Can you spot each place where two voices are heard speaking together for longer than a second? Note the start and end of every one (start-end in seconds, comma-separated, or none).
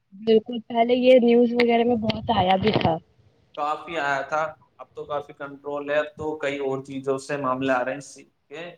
none